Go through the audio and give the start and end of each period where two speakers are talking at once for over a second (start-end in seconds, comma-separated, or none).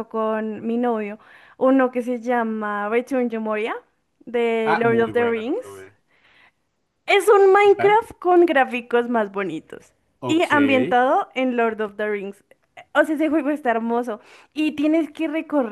4.7-5.8